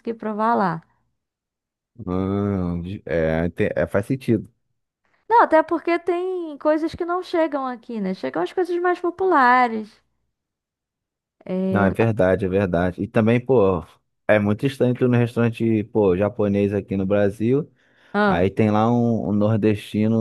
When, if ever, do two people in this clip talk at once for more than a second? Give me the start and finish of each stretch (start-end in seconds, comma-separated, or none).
none